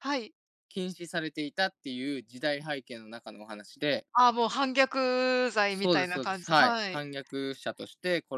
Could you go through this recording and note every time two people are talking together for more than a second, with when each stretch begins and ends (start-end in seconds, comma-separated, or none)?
5.7-7.0